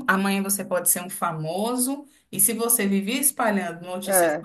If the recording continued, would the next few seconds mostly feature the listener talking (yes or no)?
no